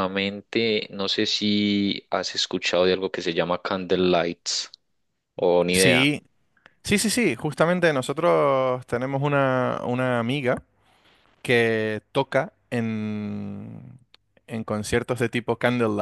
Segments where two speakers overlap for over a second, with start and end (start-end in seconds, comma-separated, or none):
none